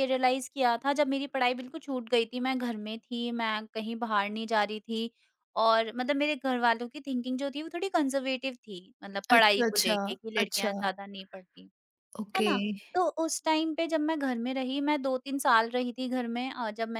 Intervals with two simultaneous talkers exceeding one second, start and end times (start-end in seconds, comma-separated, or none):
9.3-10.9